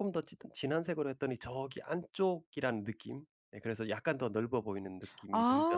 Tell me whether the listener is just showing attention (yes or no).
no